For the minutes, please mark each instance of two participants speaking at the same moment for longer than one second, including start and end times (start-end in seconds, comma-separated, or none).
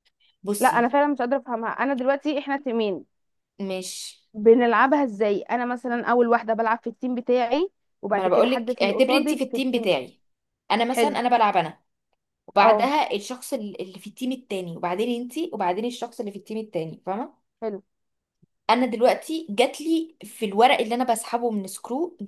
8.1-9.9